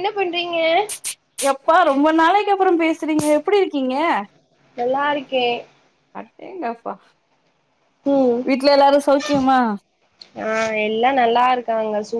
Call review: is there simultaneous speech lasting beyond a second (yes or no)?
no